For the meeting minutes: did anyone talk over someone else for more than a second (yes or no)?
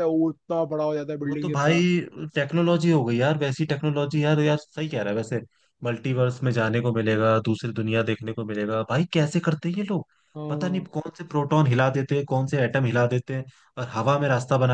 no